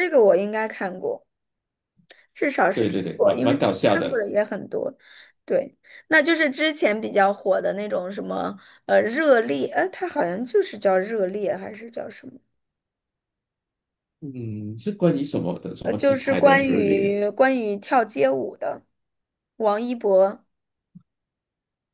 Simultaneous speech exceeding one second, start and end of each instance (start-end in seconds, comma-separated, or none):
2.7-4.2, 15.8-17.2